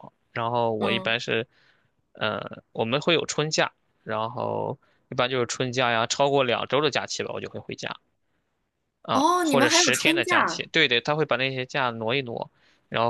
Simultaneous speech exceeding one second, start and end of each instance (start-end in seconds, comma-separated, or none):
9.1-10.7